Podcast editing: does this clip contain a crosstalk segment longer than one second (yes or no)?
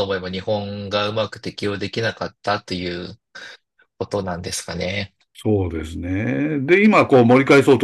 no